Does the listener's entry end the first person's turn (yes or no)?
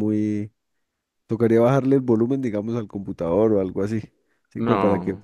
no